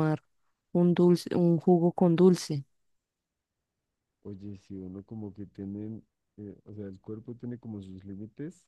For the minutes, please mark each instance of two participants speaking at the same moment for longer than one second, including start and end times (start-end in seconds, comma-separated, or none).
none